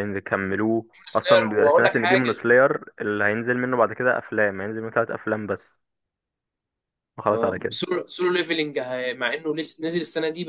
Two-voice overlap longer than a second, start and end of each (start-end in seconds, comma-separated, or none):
1.1-2.4